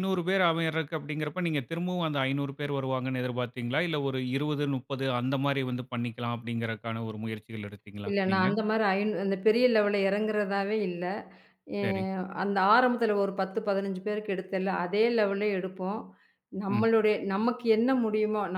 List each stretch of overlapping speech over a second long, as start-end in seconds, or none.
none